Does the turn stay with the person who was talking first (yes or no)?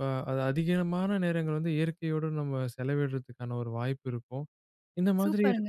yes